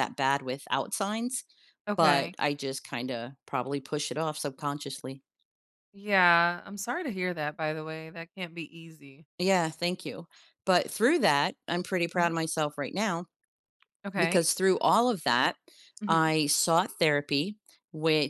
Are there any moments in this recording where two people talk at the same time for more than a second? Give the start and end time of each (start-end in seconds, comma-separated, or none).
none